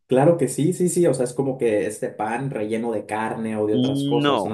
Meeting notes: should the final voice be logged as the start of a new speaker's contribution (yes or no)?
yes